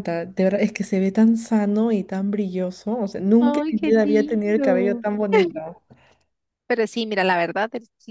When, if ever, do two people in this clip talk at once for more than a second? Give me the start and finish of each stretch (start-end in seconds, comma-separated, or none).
3.4-5.0